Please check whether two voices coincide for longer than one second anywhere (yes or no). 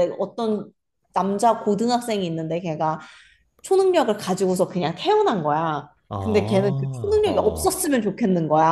yes